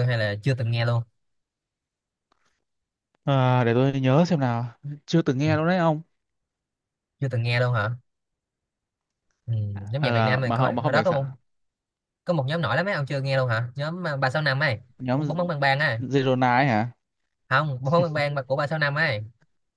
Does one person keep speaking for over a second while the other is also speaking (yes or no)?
yes